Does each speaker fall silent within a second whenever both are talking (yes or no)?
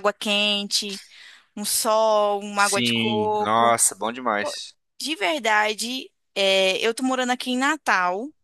no